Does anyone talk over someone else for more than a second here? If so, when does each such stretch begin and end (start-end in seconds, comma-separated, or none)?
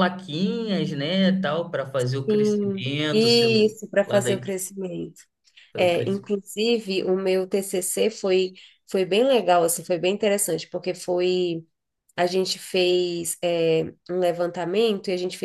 2.3-4.5